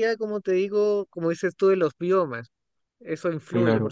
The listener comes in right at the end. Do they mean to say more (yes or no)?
yes